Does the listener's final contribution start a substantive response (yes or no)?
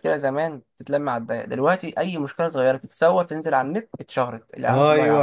yes